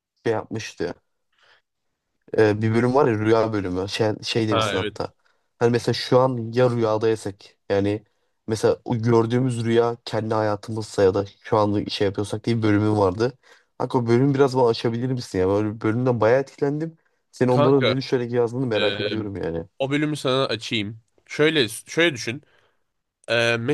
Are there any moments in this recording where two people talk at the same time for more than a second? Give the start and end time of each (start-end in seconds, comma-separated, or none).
none